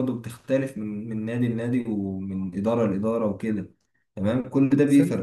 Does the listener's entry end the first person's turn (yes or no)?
no